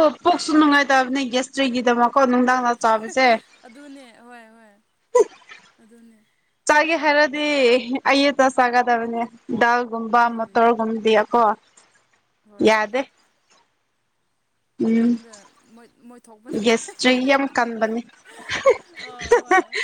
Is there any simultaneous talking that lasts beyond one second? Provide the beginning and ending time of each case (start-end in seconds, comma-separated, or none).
none